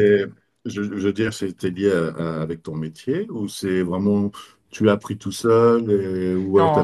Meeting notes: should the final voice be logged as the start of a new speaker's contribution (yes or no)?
yes